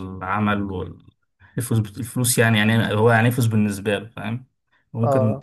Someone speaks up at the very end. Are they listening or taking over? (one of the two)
taking over